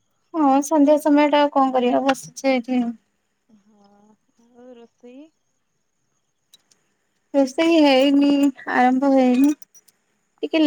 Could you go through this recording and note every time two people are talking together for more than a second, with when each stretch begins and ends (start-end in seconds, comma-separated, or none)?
none